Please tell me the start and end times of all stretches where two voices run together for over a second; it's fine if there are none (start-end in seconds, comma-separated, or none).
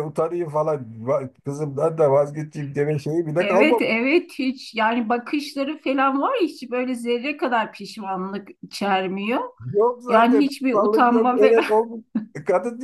10.1-11.6